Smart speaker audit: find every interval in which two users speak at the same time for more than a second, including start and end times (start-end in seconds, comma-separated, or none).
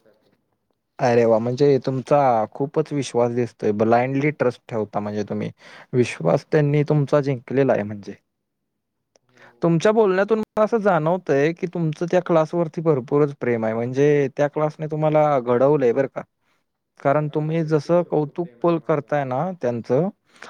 17.2-19.1